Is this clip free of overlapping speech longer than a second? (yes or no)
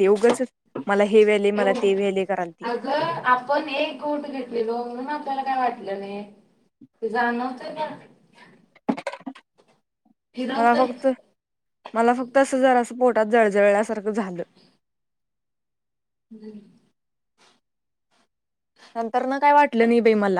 yes